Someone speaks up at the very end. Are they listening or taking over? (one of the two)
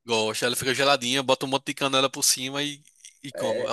taking over